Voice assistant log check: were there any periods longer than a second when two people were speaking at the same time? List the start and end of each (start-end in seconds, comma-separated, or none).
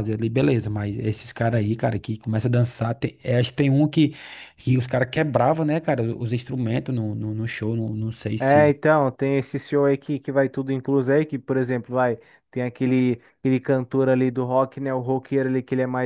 none